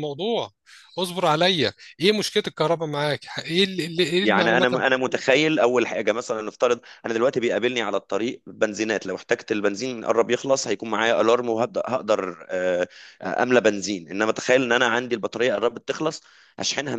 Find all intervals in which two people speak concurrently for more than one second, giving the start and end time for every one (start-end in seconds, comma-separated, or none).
none